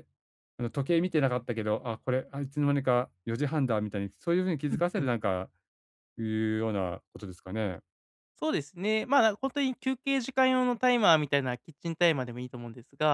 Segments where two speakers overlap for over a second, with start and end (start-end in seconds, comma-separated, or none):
none